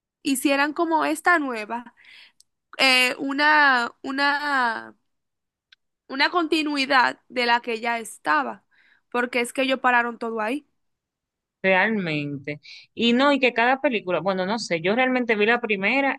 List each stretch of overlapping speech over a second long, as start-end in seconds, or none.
none